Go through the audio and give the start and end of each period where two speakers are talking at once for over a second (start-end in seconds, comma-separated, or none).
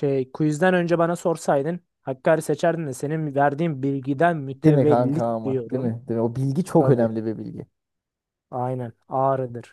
4.5-5.9